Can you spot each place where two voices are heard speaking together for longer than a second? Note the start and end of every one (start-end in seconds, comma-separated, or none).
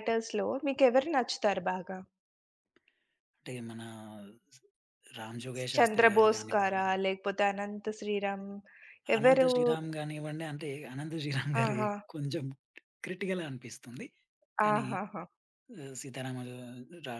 5.5-6.8